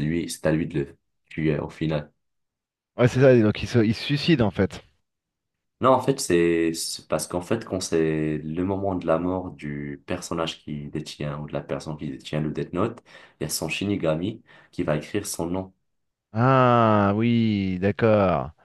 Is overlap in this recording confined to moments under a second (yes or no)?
yes